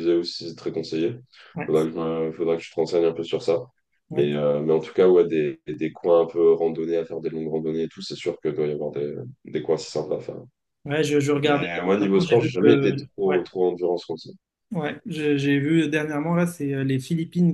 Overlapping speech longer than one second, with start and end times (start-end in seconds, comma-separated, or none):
11.4-13.4